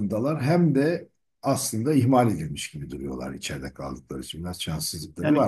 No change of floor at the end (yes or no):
no